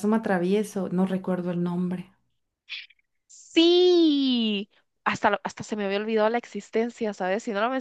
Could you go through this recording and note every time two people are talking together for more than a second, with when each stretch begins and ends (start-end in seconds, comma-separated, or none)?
none